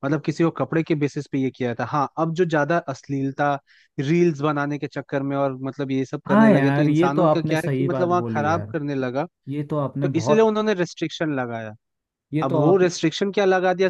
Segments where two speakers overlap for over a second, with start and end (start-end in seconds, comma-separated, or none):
6.3-8.7